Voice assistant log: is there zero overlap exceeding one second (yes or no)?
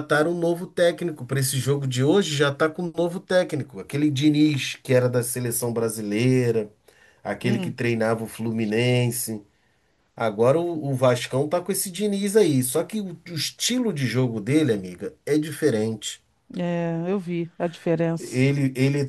yes